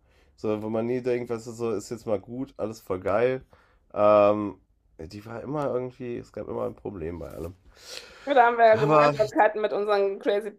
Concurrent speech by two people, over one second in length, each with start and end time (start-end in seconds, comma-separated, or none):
none